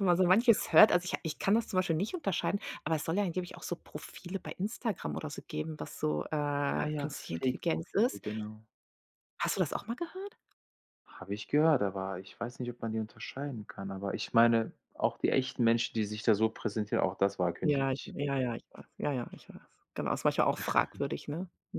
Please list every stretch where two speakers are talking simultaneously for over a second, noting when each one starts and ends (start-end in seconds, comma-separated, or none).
6.7-8.2